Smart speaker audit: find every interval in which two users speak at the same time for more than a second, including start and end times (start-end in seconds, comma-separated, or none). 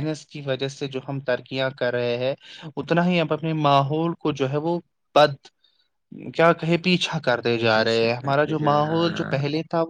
7.7-9.4